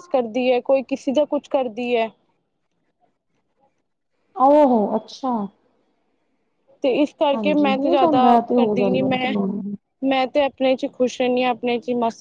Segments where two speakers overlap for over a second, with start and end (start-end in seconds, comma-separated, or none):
7.3-9.3